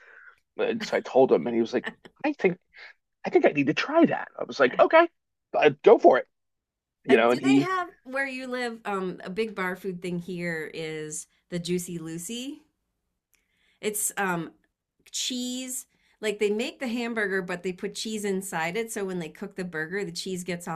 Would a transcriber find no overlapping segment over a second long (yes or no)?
yes